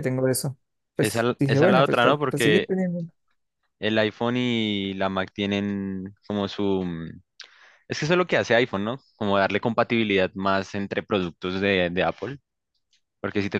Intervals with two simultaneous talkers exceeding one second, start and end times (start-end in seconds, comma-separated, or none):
1.0-2.7